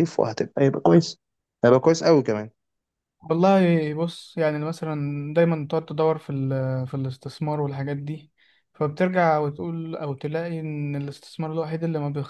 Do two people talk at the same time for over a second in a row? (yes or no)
no